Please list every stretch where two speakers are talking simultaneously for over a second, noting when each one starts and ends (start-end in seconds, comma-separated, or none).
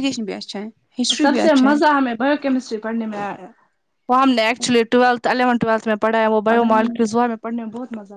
none